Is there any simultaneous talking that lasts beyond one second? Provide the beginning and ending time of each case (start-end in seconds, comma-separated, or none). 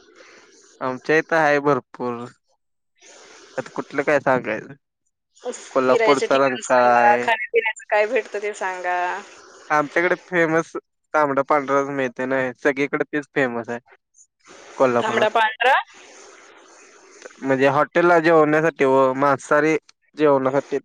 5.7-7.2